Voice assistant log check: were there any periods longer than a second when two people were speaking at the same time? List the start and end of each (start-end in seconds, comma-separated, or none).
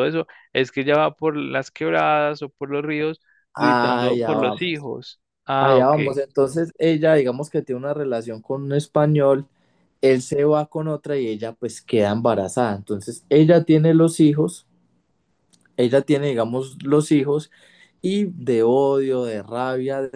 3.5-4.9